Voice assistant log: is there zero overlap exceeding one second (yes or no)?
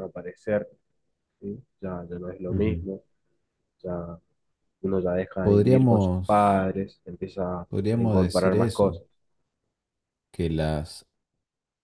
no